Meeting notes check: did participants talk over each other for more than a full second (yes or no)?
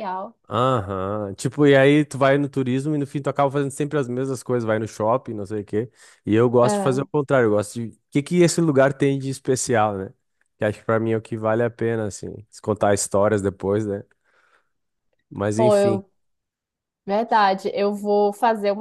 no